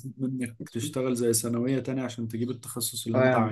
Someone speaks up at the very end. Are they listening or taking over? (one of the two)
taking over